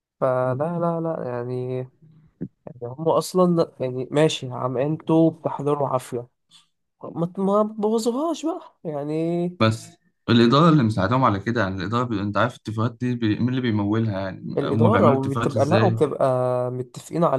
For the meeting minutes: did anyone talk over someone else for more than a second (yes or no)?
yes